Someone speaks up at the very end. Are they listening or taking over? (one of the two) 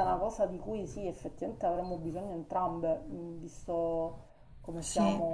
taking over